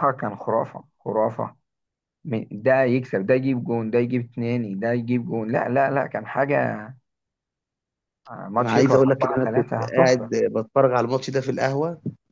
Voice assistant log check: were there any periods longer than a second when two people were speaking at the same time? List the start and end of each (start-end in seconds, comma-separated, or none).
8.6-10.3